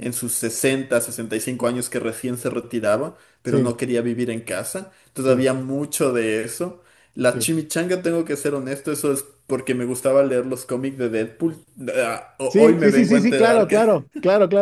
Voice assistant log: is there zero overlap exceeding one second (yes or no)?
no